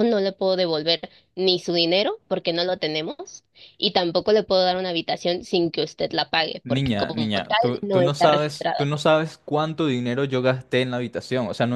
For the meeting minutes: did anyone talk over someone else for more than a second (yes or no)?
yes